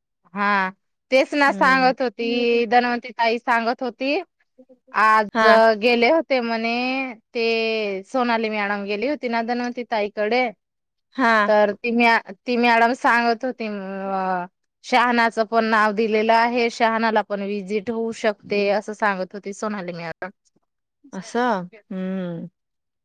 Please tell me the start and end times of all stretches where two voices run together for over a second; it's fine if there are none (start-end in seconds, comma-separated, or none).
1.3-2.6